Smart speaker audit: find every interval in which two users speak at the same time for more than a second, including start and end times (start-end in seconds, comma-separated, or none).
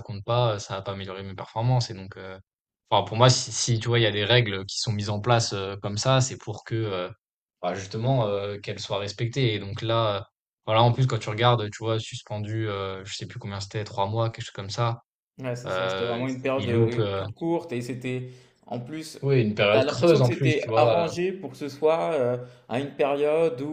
15.7-17.2, 19.7-21.1